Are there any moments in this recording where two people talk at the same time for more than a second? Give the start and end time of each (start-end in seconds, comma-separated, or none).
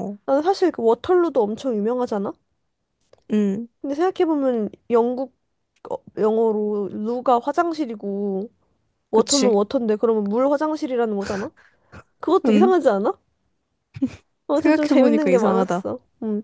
14.5-15.8